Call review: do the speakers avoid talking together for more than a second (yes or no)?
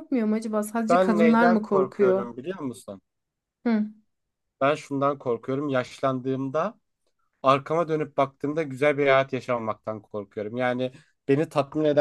no